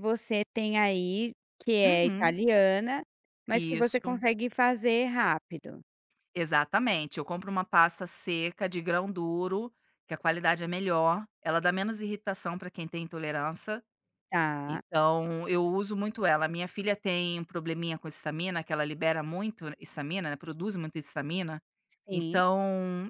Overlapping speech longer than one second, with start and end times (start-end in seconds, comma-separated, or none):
none